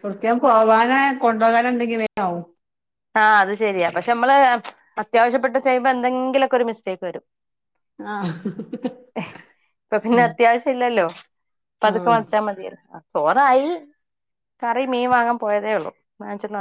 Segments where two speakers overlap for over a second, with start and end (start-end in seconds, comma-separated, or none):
none